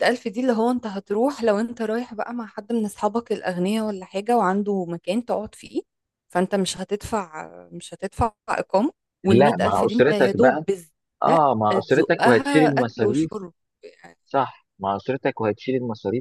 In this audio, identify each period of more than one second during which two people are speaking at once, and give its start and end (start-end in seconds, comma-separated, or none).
9.2-10.7, 11.7-13.3